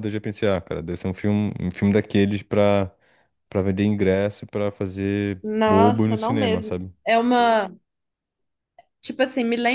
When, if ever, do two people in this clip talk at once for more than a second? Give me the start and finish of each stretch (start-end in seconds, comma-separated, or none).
5.4-6.9